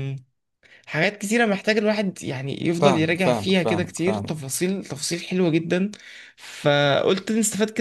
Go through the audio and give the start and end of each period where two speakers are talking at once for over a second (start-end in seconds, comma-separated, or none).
2.8-4.4